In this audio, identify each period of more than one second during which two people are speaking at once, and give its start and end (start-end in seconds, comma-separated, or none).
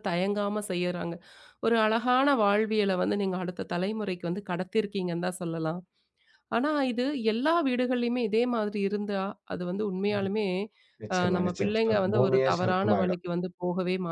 11.2-13.2